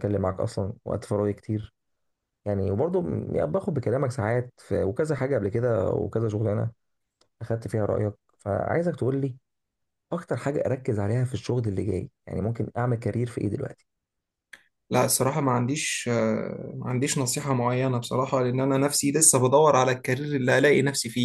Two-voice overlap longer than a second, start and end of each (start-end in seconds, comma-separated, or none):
none